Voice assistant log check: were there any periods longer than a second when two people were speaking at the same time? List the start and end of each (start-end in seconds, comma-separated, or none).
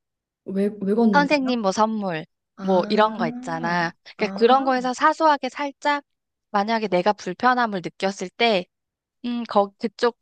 2.6-4.4